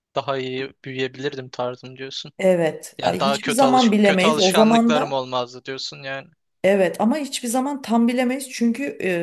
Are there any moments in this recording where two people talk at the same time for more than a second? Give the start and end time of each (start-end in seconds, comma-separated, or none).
3.0-5.2